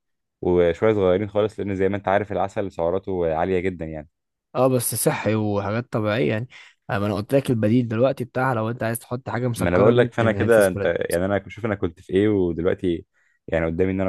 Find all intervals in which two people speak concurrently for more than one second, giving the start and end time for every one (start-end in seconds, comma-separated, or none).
9.6-10.9